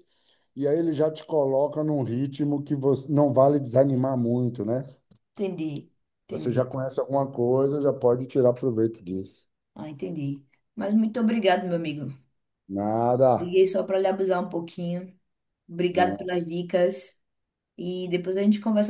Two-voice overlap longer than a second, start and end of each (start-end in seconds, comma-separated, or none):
none